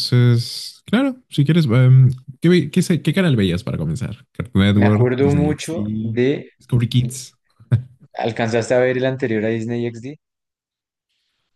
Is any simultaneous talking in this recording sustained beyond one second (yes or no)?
yes